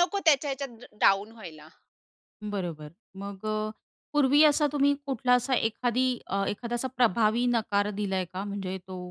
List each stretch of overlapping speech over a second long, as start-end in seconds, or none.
none